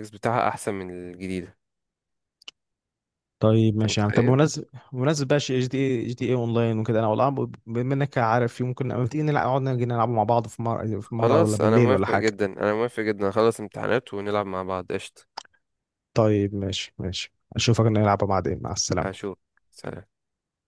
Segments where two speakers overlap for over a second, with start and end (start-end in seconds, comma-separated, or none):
11.0-12.3